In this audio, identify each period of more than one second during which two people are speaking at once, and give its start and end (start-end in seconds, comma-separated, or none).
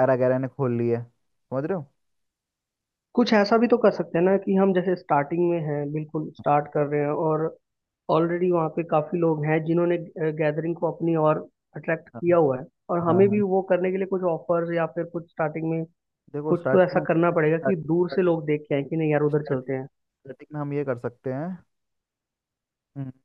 16.5-18.3